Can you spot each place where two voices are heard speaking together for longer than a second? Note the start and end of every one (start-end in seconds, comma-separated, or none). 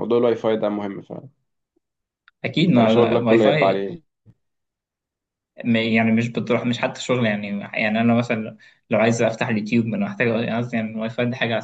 2.6-3.9